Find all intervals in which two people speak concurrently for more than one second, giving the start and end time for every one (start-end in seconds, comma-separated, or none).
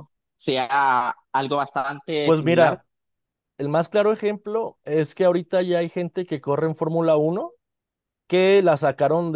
none